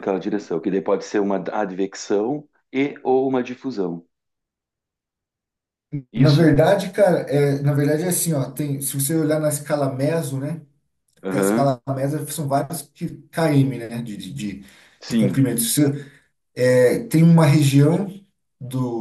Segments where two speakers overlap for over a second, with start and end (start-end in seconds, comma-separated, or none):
none